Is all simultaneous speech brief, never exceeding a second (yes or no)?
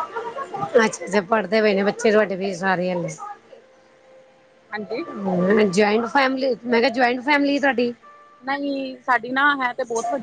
yes